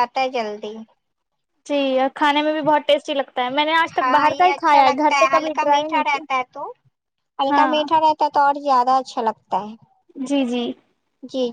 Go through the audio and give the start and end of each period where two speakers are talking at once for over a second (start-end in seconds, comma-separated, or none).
4.0-6.2